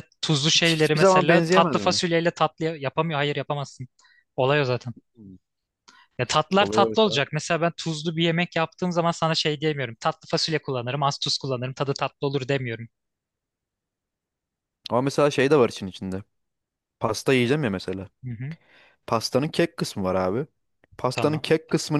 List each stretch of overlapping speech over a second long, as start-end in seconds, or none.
0.6-2.0